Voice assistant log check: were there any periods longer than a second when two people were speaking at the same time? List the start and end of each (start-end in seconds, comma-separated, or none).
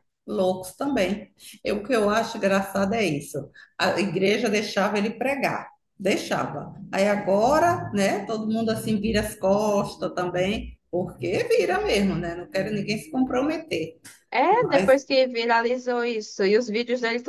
none